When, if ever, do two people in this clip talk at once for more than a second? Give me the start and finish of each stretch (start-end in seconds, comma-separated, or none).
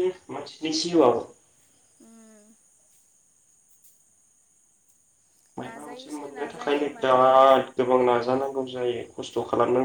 5.6-7.2